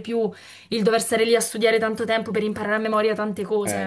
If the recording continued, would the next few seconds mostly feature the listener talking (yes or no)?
yes